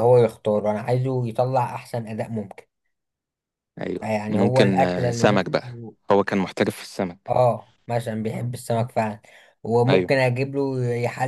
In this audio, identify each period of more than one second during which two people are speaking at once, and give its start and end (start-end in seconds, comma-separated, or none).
4.0-5.7